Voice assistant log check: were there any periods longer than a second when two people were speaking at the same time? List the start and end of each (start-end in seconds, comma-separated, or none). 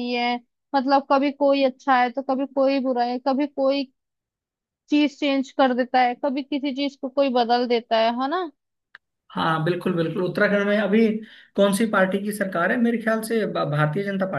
none